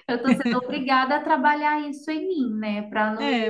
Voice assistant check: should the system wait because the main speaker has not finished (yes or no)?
no